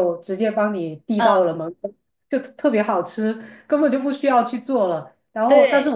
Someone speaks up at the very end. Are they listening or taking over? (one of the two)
listening